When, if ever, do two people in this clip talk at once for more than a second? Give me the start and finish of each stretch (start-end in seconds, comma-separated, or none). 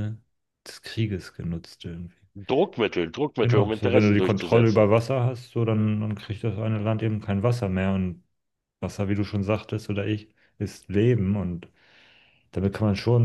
3.4-4.9